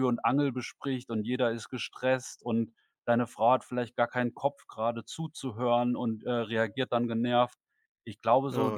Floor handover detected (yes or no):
no